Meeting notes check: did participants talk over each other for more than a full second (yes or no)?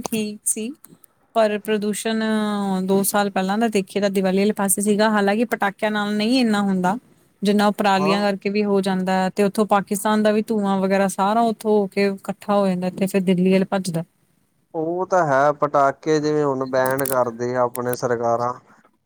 no